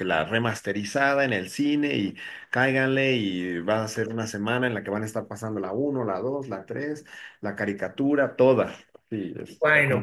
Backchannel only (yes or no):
no